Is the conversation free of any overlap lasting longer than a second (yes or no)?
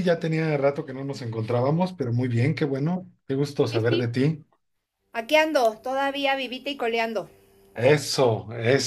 yes